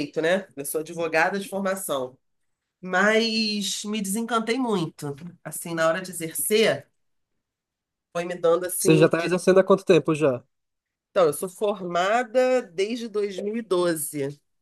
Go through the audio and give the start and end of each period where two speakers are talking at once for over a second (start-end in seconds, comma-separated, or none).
none